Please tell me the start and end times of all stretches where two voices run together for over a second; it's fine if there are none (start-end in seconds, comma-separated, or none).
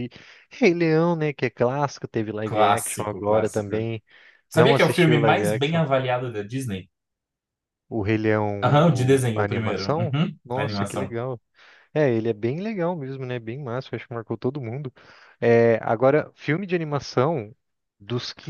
2.4-3.7, 4.5-5.8, 8.6-11.2